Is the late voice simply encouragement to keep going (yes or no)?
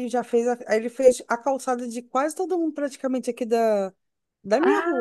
no